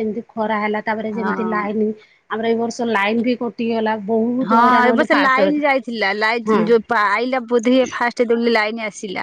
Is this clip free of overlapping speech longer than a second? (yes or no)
no